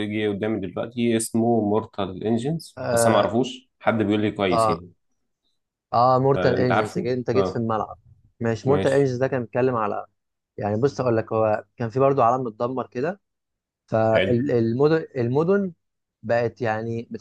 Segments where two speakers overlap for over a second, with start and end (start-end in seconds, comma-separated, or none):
6.3-7.7